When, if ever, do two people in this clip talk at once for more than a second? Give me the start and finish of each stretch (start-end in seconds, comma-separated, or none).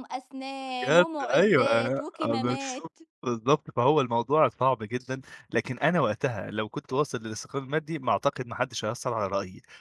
0.8-3.0